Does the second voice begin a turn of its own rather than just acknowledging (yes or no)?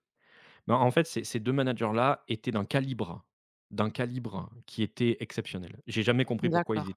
no